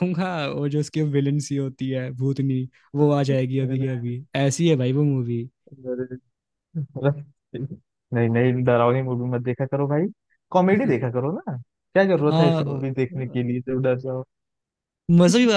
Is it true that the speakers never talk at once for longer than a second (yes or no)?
yes